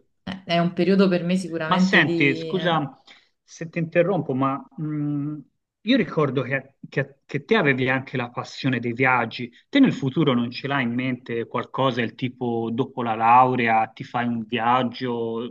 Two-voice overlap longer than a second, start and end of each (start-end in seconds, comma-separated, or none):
1.6-2.9